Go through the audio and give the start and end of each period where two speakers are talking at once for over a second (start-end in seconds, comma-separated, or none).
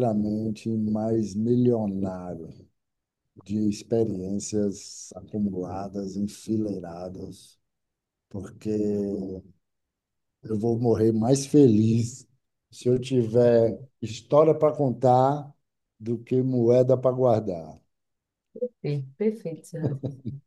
none